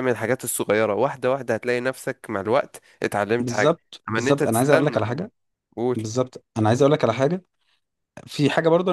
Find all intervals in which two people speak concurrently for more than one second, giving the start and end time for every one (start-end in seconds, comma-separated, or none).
3.4-5.2